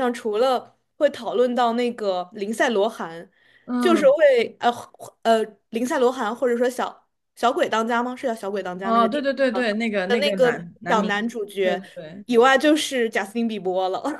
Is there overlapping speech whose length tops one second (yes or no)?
yes